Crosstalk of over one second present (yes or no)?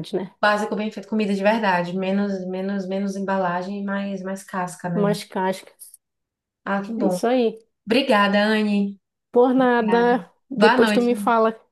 yes